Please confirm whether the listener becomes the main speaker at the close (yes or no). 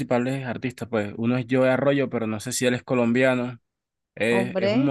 no